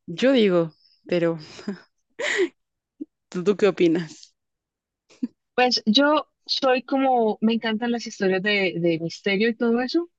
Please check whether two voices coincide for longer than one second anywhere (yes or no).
no